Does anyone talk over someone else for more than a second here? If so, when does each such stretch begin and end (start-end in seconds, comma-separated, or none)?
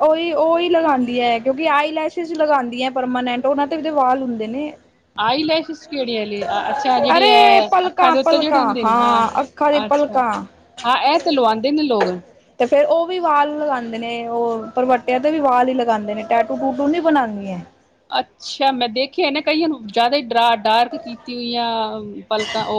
7.2-8.6